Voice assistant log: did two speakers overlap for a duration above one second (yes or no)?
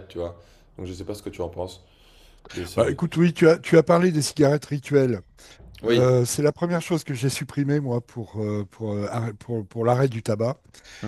no